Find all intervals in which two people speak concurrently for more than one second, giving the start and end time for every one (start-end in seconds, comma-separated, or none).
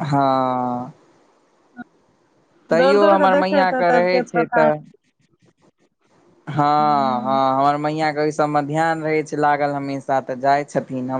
2.8-4.6